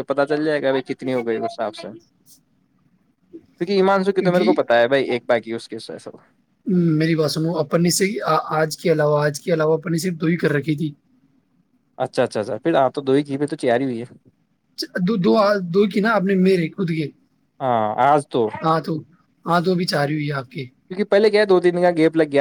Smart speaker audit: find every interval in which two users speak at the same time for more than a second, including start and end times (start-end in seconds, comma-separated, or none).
none